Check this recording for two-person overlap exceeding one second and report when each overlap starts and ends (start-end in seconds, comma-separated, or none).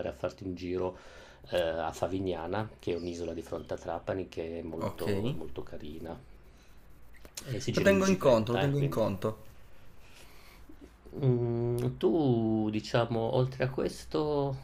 7.7-9.0